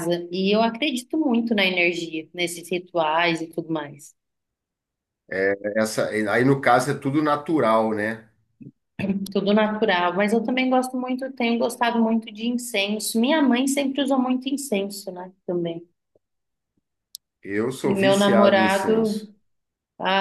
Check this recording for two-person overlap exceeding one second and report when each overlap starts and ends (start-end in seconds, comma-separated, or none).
17.8-19.3